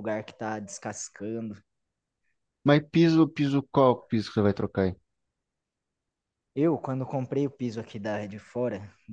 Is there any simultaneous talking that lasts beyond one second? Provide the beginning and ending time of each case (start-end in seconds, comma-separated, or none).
none